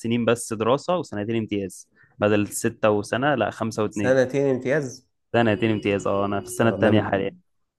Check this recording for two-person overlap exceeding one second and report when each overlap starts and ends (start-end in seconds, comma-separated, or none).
none